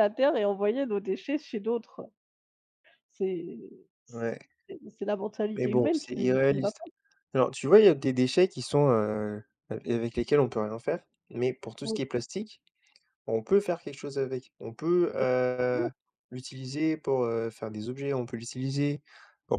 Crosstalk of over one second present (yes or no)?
yes